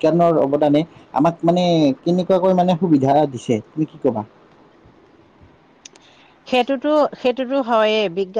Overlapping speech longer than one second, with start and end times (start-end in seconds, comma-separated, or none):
none